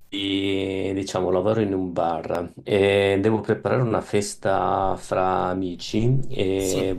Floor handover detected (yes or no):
no